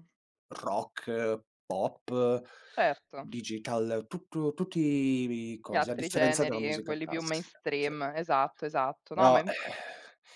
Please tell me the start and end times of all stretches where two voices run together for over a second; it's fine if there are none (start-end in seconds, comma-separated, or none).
5.6-7.9